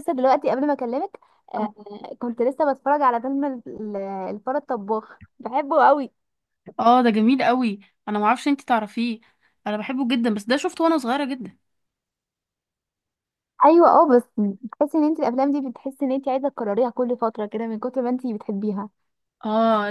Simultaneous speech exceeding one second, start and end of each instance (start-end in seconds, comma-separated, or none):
none